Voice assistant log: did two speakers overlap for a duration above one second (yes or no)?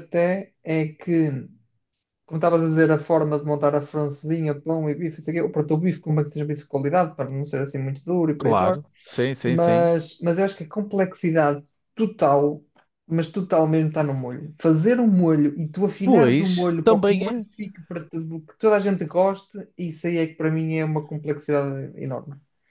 yes